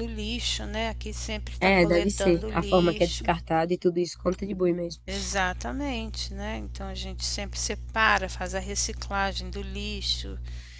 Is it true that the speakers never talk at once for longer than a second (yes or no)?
no